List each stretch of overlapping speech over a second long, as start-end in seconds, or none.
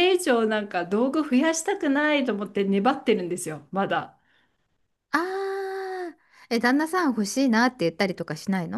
none